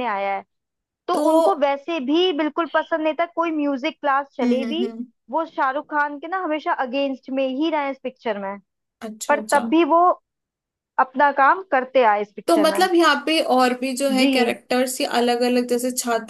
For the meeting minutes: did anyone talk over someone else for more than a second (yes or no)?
no